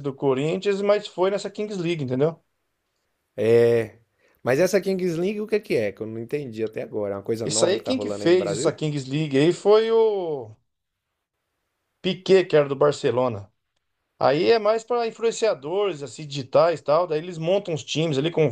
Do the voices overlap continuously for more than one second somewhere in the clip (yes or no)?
yes